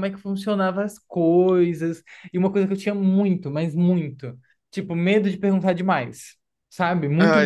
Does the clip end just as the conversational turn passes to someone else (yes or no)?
no